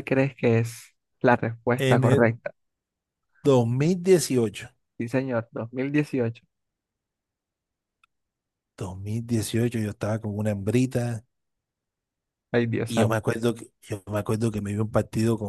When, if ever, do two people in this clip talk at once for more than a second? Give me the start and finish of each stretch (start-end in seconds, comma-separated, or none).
none